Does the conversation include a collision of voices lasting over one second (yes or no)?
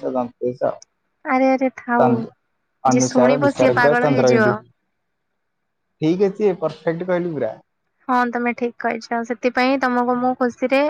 yes